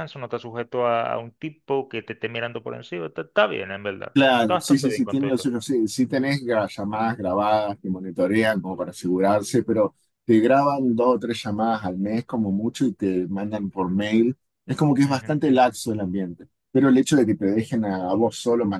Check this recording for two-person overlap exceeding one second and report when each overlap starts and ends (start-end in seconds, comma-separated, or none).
4.1-5.5